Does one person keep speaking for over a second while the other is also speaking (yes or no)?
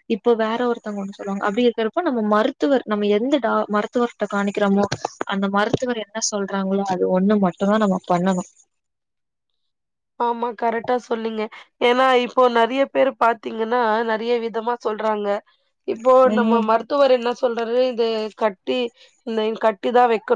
no